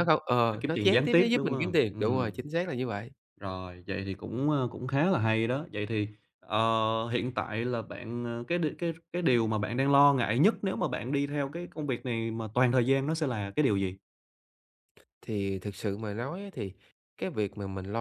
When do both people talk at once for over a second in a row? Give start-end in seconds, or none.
0.5-2.4